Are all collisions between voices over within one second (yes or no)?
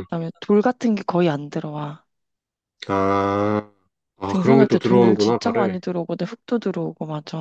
no